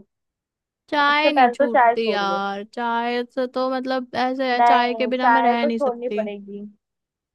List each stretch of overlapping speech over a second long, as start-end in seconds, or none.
1.0-2.4, 4.6-6.2